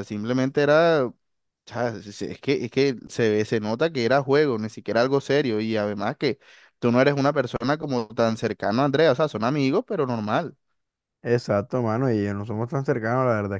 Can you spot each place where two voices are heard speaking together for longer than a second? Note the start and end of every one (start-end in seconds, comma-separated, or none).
none